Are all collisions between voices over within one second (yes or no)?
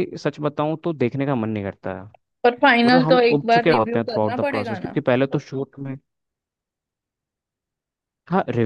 no